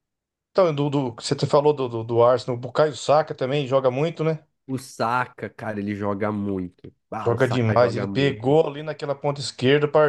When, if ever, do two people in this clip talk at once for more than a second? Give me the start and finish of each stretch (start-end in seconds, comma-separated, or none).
7.2-8.6